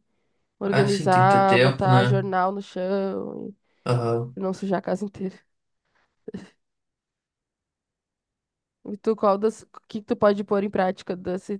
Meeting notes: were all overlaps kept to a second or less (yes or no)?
no